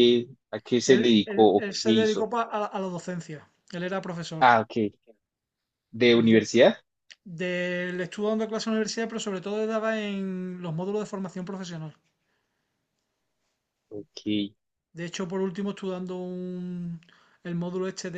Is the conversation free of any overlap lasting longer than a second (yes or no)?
no